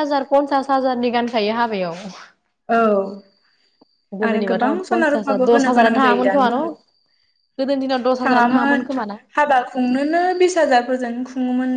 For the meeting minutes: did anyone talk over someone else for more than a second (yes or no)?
yes